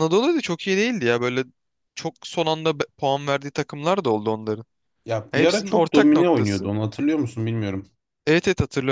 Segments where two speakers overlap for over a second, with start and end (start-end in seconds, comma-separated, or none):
5.3-6.7